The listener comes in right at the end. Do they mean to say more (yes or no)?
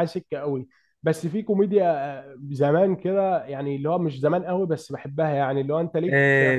yes